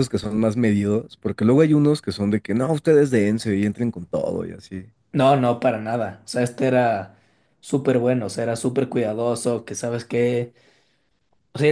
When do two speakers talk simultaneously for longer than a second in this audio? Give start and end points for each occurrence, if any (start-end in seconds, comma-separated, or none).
none